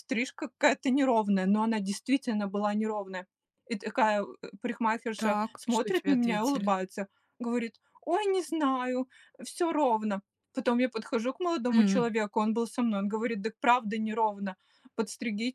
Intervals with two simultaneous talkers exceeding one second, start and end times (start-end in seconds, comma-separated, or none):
5.2-6.7